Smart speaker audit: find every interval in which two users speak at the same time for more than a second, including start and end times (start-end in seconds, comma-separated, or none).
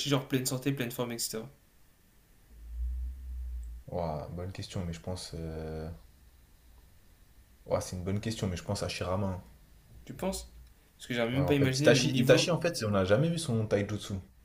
11.3-12.5